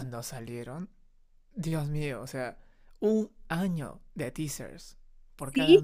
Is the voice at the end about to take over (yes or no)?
yes